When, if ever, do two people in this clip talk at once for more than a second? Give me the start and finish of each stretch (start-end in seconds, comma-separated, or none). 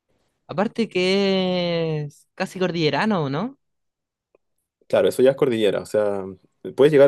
none